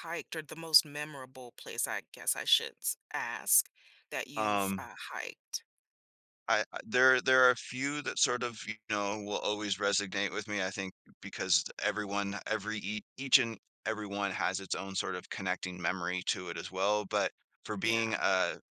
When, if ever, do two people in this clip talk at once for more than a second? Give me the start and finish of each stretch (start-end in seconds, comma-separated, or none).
none